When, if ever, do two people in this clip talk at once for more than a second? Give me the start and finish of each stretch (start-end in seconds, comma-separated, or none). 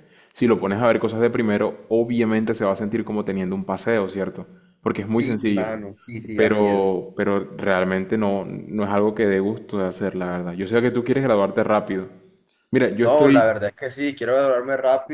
none